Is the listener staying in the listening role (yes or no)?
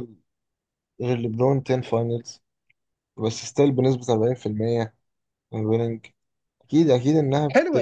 no